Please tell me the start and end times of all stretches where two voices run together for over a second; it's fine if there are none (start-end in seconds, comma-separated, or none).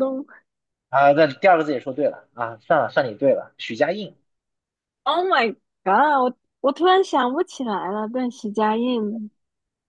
none